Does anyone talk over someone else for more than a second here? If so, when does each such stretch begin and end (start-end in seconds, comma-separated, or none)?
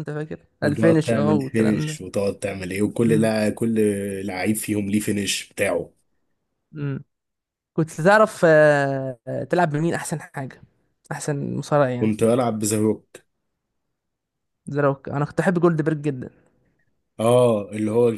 0.6-1.9